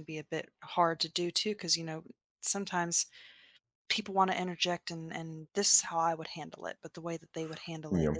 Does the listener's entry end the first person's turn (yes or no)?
no